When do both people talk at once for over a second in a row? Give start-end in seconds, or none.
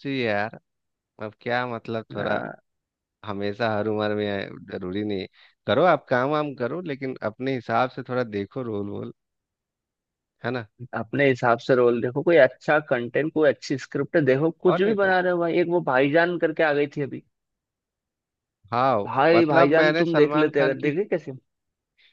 19.1-20.9